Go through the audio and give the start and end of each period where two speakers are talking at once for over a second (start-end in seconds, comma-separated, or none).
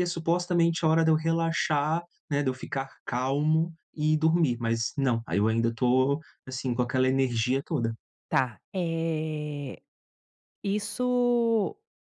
none